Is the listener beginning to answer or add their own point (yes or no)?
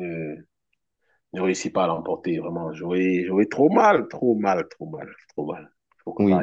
yes